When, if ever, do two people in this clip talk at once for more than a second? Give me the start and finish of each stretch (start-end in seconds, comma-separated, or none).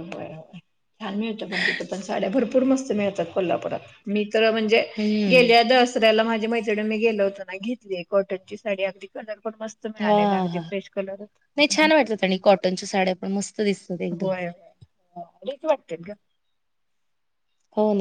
none